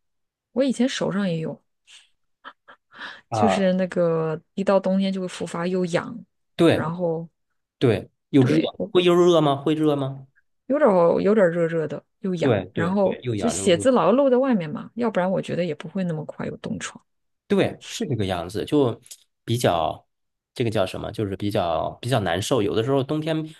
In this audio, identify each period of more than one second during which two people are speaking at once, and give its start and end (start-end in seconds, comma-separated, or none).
12.4-13.9